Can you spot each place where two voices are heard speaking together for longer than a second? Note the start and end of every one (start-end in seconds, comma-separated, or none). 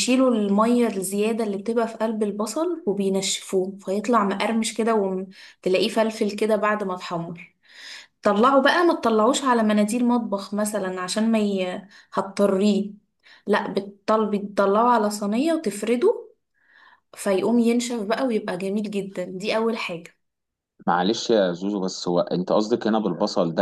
none